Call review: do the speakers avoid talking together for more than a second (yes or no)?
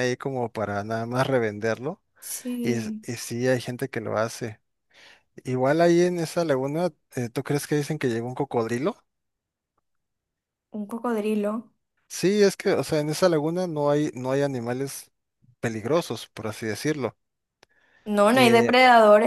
yes